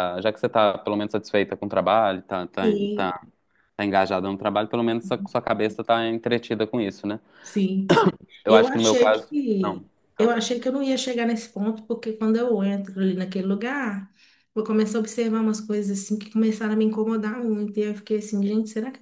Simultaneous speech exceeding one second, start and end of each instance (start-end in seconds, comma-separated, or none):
8.5-10.3